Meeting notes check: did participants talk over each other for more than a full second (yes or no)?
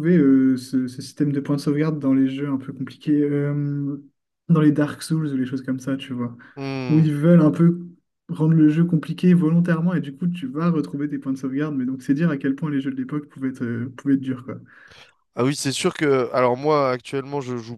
no